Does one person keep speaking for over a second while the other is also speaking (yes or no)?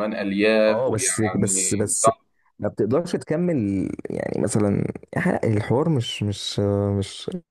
yes